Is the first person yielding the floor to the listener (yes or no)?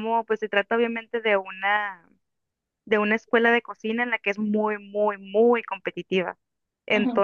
no